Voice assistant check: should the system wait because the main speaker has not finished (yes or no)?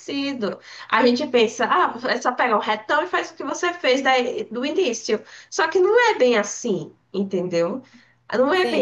no